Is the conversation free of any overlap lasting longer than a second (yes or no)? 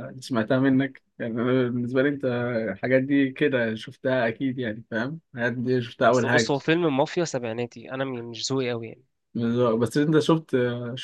yes